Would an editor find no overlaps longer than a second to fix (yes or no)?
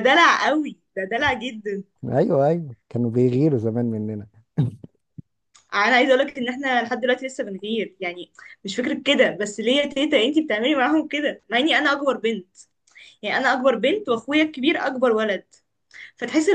yes